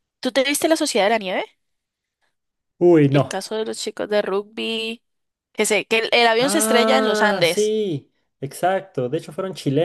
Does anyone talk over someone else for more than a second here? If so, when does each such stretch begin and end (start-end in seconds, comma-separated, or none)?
6.4-7.8